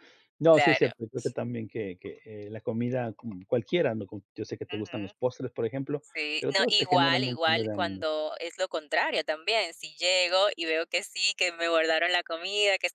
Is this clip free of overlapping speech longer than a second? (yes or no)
no